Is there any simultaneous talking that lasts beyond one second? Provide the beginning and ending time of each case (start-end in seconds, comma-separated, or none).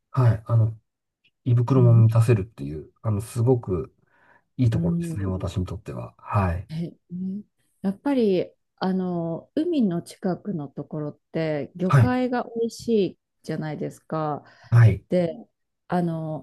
none